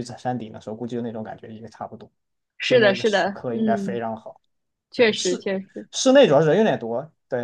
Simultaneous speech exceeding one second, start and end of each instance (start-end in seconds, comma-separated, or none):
2.7-4.0